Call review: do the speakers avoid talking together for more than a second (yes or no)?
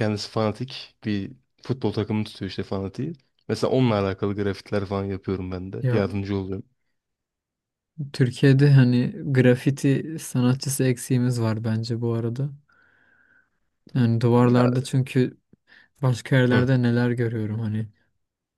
yes